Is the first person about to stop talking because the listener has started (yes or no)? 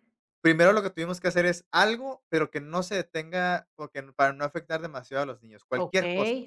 yes